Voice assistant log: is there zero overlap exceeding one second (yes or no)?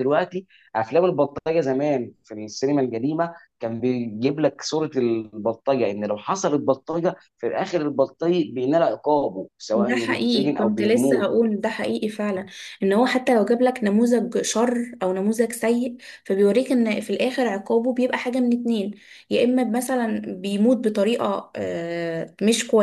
no